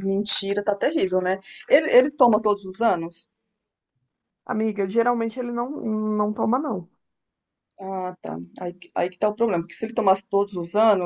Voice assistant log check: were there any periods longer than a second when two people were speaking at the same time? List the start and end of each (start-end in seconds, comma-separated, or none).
none